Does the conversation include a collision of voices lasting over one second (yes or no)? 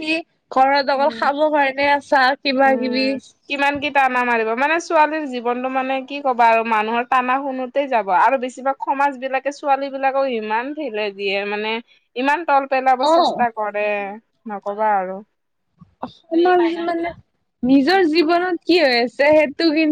no